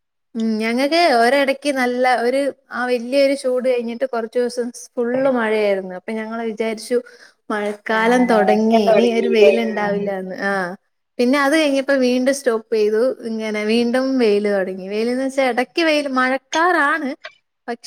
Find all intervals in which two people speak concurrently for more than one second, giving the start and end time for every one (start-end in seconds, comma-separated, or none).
8.0-9.9